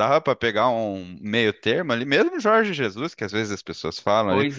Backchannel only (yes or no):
yes